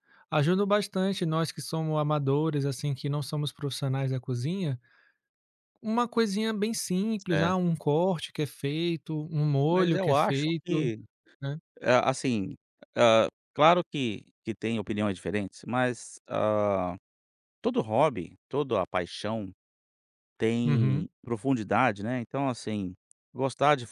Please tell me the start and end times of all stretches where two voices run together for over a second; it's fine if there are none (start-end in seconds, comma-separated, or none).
9.7-10.9